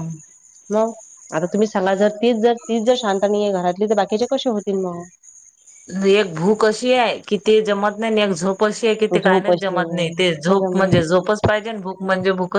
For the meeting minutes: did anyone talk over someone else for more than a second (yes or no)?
yes